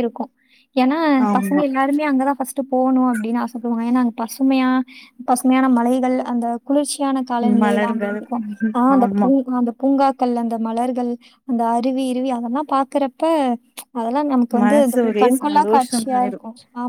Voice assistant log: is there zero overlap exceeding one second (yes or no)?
no